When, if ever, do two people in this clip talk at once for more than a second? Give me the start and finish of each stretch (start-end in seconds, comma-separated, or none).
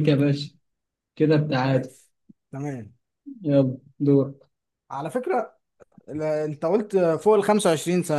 none